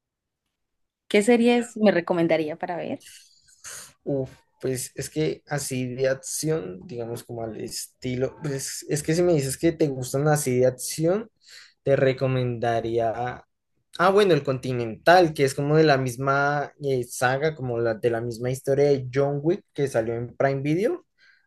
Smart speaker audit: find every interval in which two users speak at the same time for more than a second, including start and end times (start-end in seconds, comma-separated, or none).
none